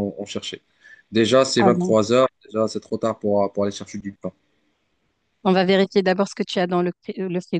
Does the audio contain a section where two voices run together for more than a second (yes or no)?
no